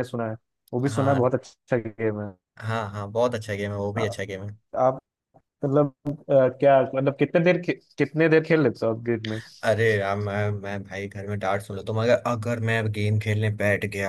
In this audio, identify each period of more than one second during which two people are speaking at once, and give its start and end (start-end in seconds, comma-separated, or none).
none